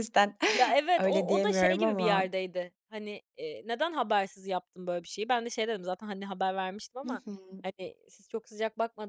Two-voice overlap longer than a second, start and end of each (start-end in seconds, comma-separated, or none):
1.0-2.3